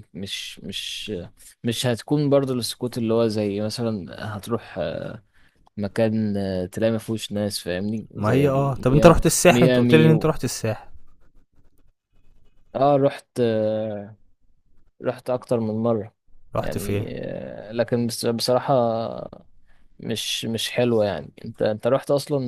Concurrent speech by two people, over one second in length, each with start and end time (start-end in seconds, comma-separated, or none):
8.2-10.3